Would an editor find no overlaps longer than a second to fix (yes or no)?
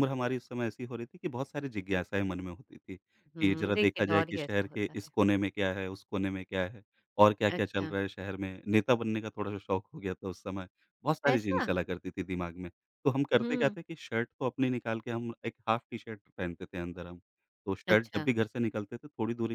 no